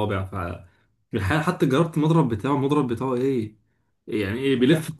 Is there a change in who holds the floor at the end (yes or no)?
no